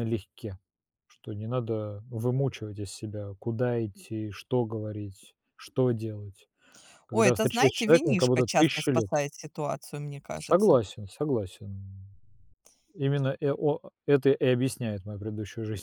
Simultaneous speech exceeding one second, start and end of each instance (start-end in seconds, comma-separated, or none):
7.1-9.2